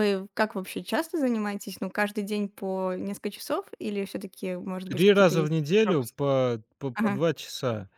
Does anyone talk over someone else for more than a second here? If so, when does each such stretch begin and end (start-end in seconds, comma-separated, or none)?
4.8-6.2